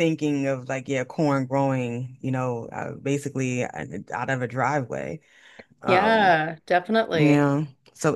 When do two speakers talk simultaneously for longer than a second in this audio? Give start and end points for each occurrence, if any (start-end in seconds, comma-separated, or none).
none